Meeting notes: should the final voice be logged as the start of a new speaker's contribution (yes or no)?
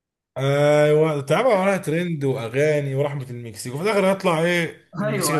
yes